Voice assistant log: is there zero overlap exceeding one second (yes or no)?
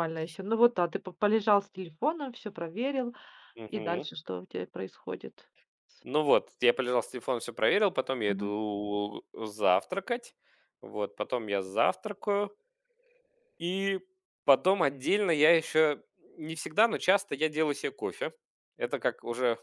yes